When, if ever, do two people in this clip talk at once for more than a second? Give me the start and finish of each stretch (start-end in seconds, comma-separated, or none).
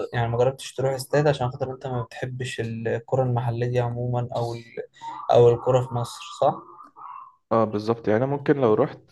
none